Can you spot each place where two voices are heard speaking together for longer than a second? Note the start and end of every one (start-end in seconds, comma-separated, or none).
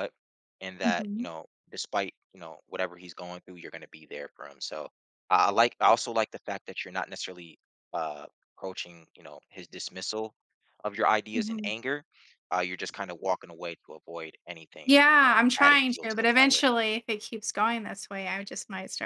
14.8-16.6